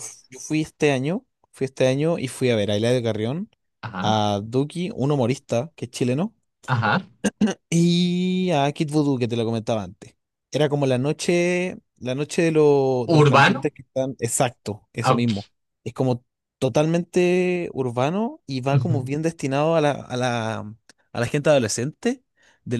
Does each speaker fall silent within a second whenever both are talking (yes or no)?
yes